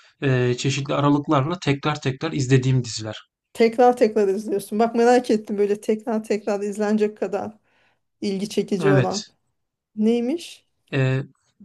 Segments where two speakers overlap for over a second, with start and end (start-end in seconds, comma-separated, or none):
none